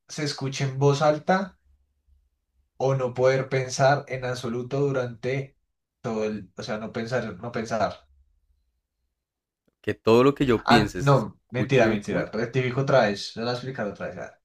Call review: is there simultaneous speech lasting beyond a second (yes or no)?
yes